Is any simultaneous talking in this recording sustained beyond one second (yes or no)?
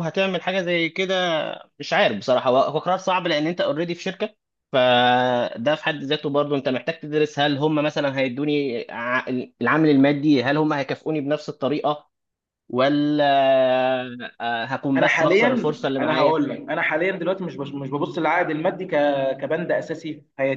yes